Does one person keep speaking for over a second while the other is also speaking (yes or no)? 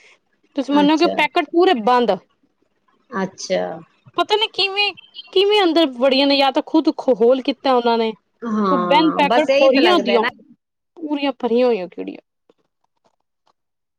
yes